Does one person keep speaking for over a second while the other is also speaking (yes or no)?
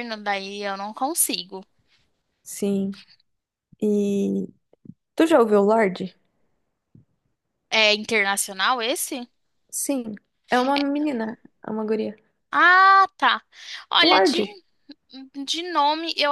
no